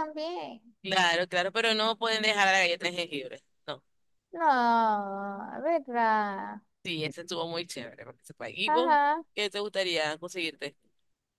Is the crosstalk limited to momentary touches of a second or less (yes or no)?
yes